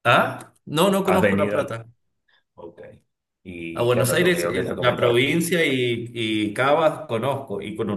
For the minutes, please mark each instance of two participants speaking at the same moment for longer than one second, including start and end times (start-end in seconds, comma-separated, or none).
3.7-5.3